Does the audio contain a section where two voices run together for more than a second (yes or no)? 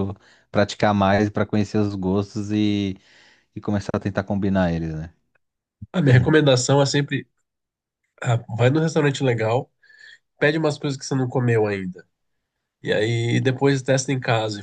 no